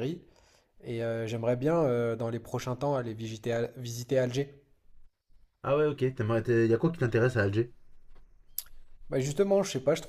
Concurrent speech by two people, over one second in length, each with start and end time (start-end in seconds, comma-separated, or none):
none